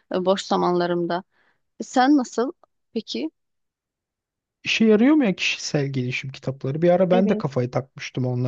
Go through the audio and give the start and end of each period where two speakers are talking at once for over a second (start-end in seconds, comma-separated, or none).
none